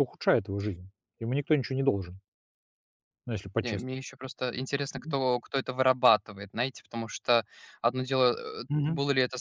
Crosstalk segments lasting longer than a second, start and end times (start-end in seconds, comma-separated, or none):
none